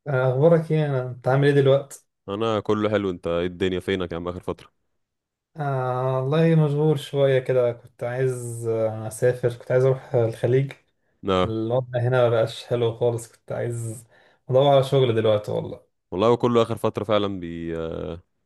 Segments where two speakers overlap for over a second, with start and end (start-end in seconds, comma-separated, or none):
none